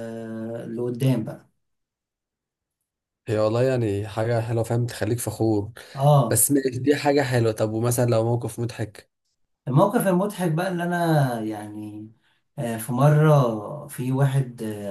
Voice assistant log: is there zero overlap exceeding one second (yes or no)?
yes